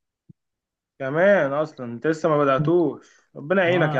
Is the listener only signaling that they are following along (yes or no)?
no